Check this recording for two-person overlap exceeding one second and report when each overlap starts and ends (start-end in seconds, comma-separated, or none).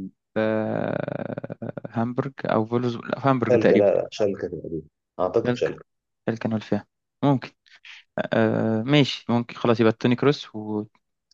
none